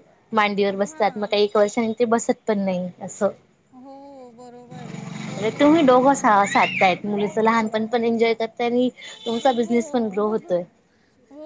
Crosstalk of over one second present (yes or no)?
yes